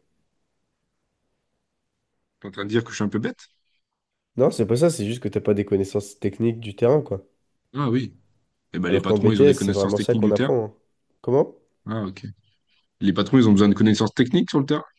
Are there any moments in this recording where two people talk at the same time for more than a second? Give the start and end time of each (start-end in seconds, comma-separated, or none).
8.9-10.5